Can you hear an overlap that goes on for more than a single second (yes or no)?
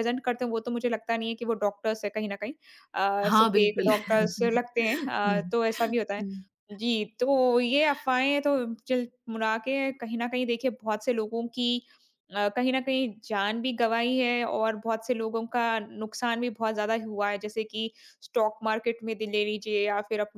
yes